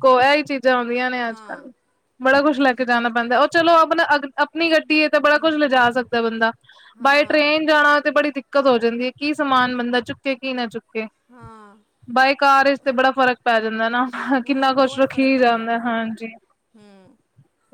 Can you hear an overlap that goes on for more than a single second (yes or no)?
yes